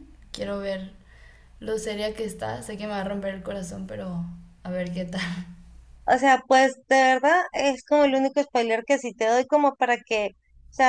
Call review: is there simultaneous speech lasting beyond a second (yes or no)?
no